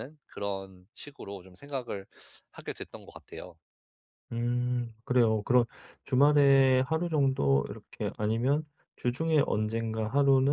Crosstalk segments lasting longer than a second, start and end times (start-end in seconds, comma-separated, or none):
none